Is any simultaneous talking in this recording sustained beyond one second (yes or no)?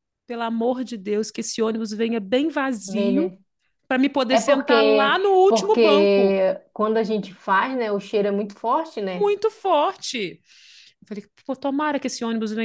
yes